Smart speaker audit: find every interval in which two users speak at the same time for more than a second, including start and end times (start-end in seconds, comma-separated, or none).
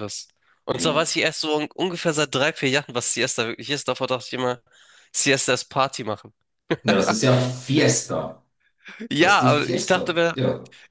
9.2-10.4